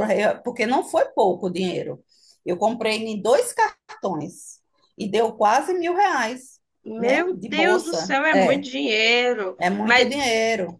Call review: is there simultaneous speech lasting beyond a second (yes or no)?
yes